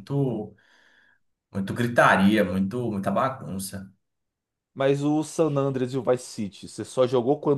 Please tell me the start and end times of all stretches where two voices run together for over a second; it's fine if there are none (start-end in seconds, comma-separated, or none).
none